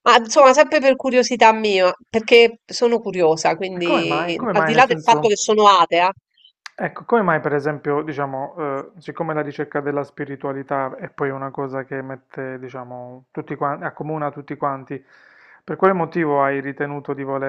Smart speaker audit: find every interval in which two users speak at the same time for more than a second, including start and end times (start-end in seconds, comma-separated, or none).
3.8-5.3